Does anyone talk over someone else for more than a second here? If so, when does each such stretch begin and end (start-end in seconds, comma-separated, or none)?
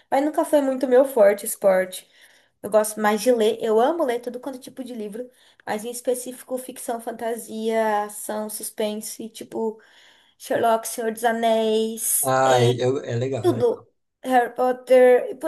none